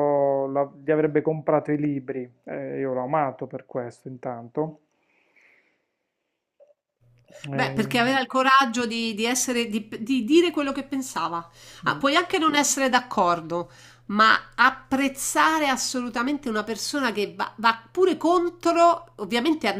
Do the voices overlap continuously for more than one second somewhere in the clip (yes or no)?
no